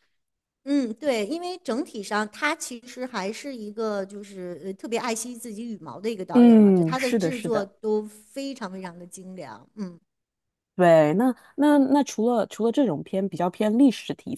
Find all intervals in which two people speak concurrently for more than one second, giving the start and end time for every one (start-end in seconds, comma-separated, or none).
6.3-7.7